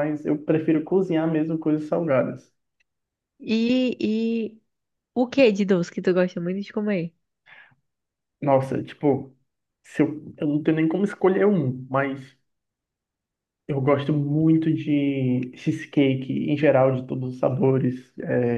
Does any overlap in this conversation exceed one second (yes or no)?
no